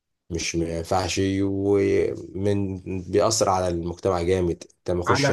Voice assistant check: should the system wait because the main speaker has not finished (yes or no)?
yes